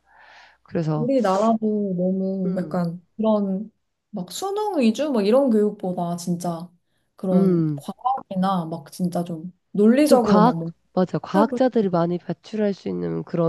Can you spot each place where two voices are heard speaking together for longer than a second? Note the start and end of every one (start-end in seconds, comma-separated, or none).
10.1-11.5